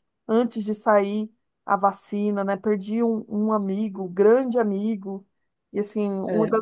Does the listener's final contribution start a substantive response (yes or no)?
no